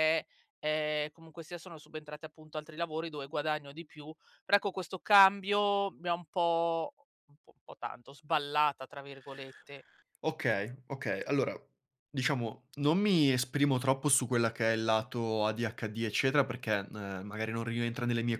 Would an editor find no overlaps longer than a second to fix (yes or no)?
yes